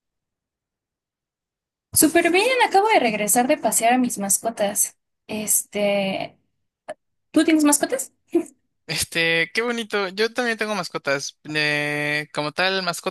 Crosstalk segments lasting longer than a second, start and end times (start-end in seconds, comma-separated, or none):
none